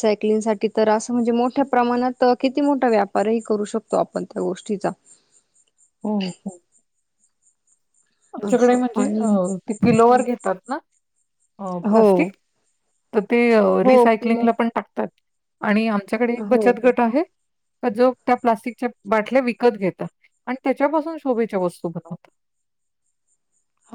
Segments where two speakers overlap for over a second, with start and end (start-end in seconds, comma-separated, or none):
none